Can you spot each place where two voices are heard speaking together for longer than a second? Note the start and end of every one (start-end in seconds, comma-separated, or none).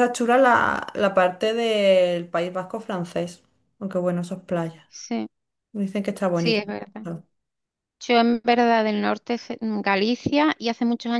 none